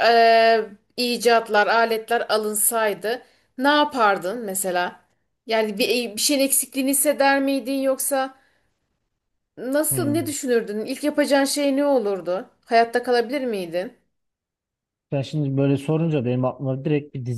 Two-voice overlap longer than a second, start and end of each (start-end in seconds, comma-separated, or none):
none